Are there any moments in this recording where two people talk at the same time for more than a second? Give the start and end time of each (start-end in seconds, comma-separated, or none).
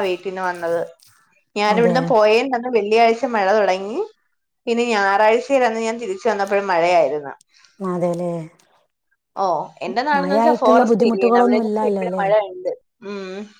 10.2-12.2